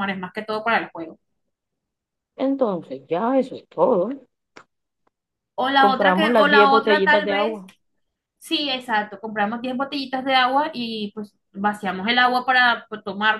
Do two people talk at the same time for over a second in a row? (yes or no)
yes